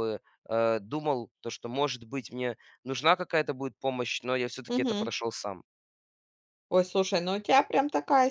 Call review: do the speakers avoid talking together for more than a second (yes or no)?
yes